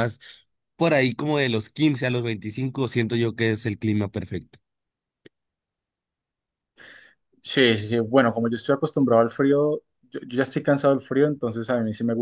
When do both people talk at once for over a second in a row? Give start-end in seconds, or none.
none